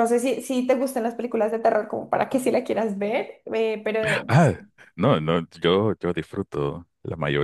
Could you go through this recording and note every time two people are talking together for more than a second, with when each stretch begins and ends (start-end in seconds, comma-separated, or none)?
none